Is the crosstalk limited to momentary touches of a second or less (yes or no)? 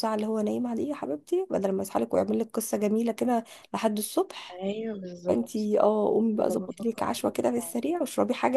no